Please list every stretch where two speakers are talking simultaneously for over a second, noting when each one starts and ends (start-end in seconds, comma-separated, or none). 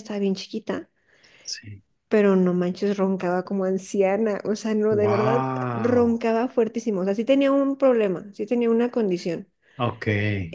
4.9-6.2